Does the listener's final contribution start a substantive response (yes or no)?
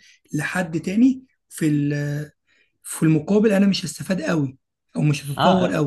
yes